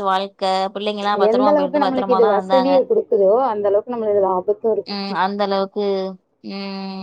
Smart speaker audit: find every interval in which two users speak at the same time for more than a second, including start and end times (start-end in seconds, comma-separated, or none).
1.3-2.7